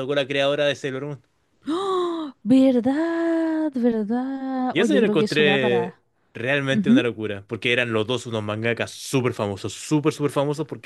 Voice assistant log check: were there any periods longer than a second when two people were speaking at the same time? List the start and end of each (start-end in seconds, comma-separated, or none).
4.7-6.0